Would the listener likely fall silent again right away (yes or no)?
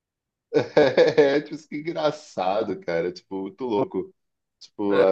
yes